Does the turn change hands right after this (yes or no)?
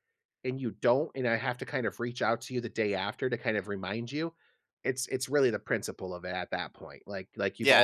no